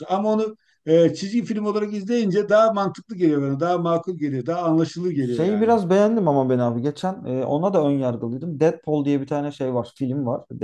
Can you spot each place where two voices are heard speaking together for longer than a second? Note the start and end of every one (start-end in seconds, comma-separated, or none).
none